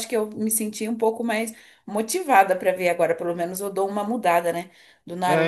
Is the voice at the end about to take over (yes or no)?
yes